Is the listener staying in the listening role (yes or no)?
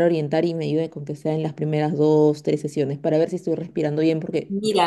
yes